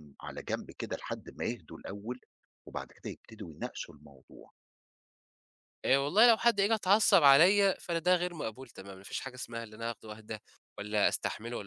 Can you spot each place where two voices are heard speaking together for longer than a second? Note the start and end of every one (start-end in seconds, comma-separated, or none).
none